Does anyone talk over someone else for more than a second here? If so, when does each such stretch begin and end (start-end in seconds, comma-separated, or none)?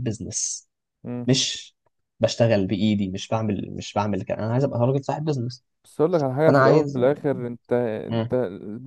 none